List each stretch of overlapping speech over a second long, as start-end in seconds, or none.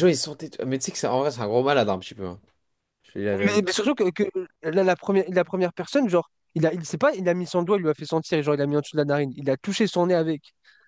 none